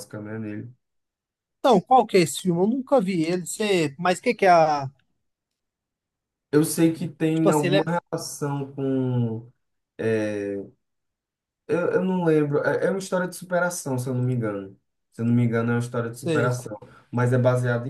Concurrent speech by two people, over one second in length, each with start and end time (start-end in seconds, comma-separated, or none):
none